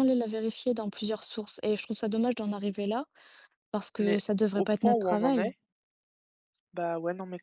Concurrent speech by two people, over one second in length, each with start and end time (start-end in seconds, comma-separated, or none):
4.0-5.5